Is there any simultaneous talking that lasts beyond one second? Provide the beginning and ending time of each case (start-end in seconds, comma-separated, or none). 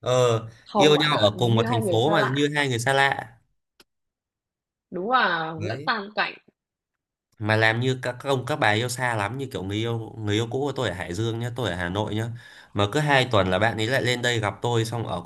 0.7-2.5